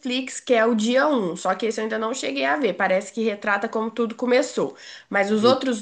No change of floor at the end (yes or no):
yes